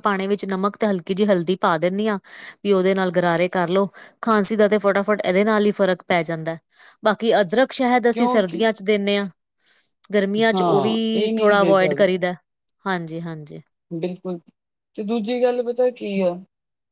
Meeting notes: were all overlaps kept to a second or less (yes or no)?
no